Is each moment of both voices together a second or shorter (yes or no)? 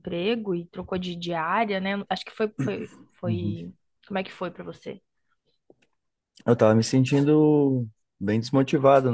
yes